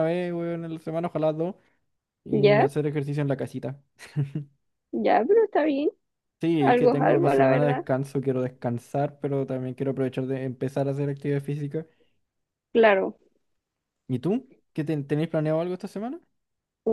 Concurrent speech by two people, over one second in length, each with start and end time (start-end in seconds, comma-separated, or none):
6.6-7.8